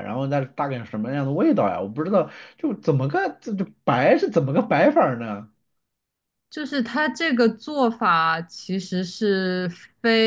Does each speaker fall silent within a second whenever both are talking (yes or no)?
yes